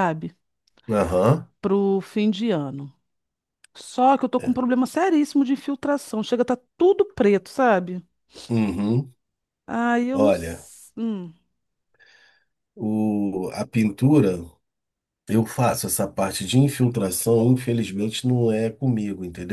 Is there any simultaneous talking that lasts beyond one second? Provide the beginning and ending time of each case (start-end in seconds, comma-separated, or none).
none